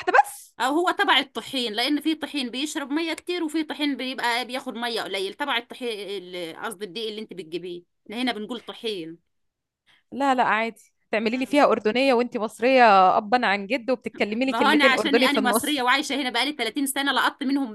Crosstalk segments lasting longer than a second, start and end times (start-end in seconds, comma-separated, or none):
14.4-15.8